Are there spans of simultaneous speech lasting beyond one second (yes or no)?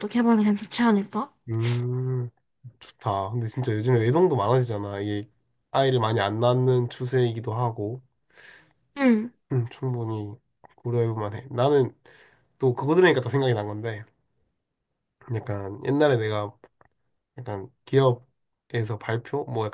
no